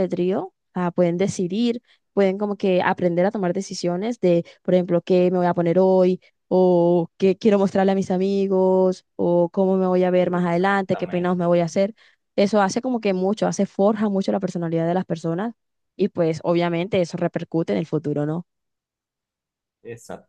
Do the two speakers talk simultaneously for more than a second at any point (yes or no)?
yes